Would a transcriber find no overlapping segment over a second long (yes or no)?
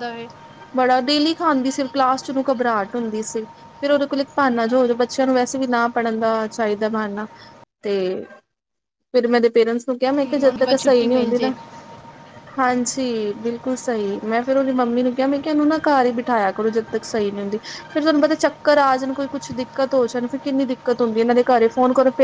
no